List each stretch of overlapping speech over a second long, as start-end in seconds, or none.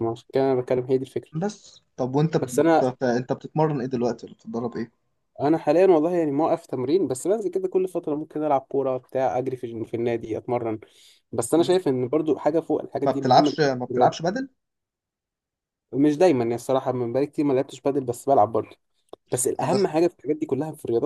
13.0-14.3